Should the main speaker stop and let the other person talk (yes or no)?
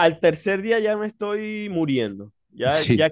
no